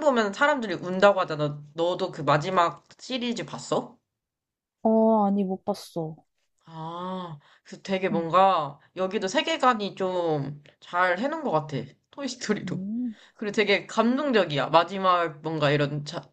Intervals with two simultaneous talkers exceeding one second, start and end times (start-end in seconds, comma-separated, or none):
none